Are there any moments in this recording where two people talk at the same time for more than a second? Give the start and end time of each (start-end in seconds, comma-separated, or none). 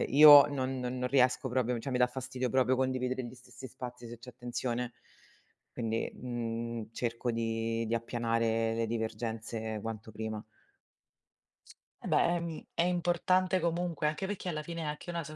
none